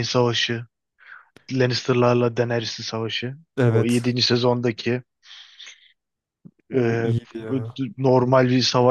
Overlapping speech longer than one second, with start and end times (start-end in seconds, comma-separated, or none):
none